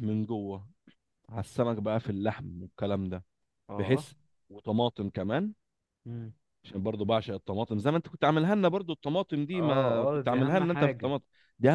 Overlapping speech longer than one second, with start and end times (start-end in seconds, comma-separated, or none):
9.5-11.1